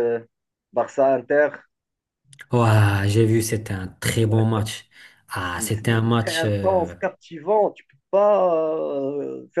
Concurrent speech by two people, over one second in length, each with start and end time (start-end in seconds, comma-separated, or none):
5.6-6.9